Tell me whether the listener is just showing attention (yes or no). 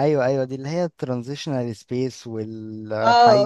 no